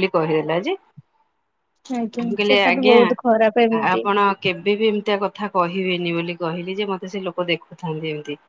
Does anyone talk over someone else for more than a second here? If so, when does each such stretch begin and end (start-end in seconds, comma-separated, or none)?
2.2-4.0